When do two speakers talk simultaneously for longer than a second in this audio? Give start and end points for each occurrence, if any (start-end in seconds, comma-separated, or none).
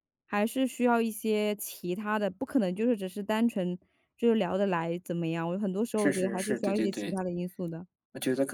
5.9-7.1